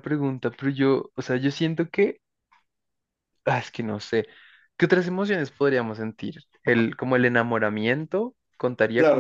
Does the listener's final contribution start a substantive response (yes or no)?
yes